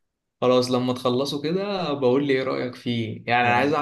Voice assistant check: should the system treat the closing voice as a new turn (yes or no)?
no